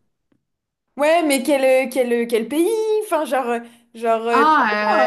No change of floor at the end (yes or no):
no